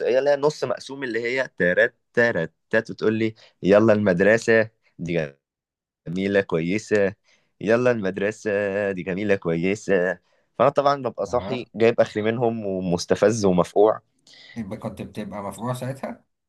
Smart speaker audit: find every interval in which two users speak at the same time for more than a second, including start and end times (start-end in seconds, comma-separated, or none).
none